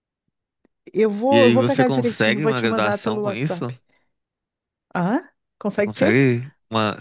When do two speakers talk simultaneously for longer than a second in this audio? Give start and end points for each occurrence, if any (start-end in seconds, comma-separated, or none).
1.3-3.7